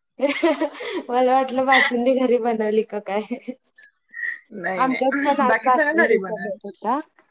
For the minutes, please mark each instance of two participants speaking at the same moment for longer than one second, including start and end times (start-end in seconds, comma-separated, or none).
4.8-6.6